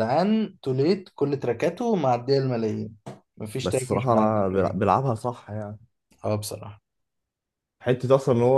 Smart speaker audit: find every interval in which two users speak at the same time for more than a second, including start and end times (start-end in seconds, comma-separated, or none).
3.6-4.9